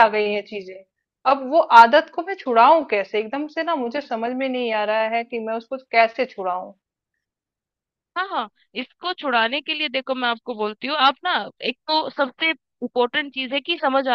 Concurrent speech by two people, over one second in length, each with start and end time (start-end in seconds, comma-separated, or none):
none